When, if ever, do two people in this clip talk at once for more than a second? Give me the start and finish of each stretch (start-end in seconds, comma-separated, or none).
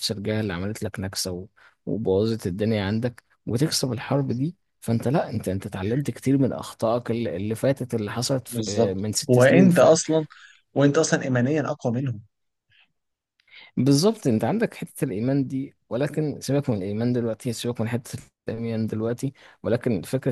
8.5-9.7